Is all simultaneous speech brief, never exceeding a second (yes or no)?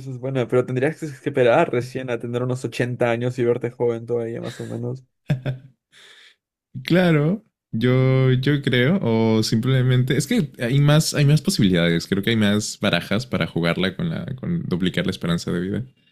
yes